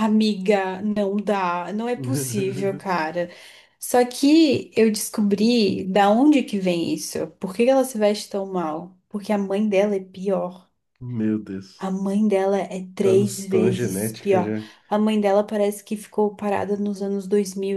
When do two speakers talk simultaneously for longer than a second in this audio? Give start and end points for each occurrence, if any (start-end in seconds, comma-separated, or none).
13.0-14.6